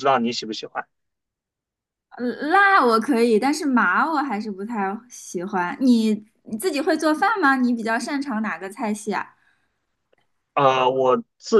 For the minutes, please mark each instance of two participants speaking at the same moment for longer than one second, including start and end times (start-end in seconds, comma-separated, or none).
none